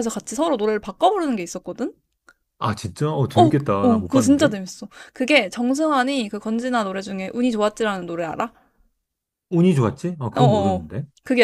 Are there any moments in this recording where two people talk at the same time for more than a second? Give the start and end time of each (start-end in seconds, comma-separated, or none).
3.4-4.6